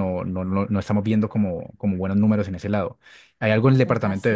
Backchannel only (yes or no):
yes